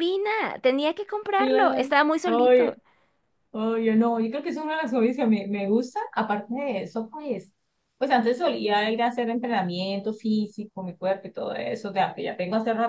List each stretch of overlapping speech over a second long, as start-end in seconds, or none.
1.4-2.8